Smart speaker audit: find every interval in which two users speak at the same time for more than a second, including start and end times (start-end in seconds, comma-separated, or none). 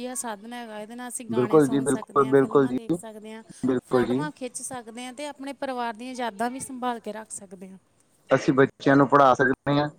1.3-2.8